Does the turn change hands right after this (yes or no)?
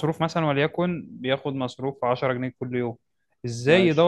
no